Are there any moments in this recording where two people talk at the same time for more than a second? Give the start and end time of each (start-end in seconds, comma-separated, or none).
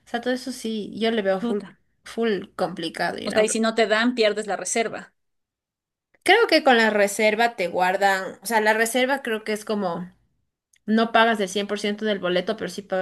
none